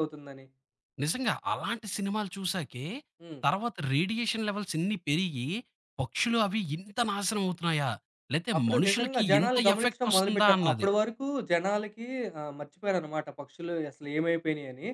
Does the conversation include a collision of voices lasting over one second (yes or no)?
yes